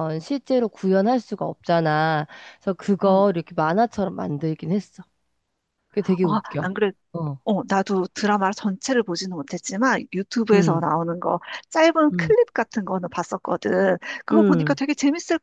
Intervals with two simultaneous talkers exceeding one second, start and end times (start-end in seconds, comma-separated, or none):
none